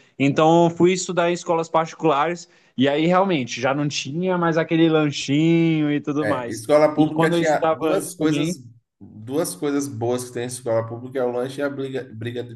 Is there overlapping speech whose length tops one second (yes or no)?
yes